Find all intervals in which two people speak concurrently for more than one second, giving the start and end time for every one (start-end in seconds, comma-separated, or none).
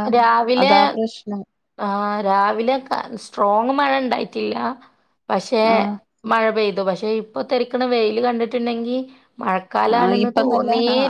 none